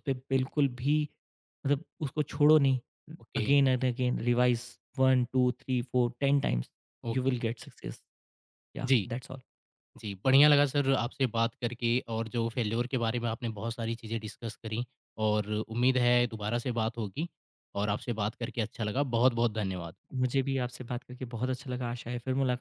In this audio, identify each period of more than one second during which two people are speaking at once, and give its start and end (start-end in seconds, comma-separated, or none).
none